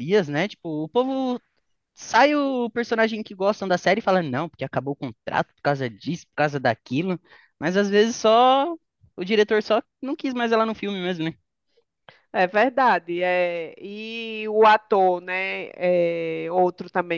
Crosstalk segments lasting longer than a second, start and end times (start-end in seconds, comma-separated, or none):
none